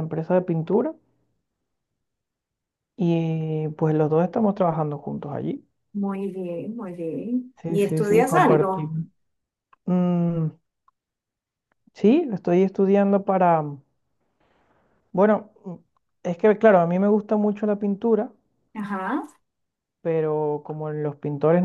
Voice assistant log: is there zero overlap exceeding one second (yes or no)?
no